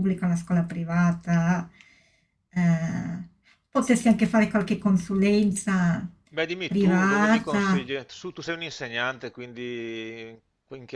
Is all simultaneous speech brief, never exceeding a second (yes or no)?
no